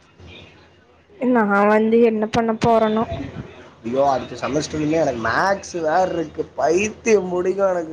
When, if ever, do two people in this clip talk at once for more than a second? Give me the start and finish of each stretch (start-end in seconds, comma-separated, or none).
none